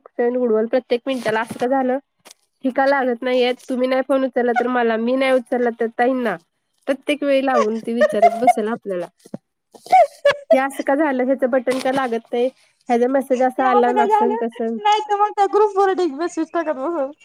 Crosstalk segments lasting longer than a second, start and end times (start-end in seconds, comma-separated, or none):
none